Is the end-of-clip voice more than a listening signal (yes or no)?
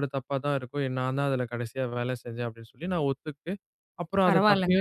no